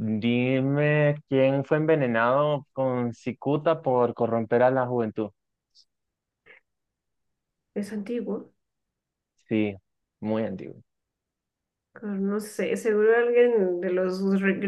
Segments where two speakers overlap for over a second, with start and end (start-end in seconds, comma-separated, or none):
none